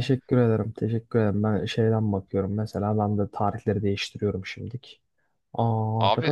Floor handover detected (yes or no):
yes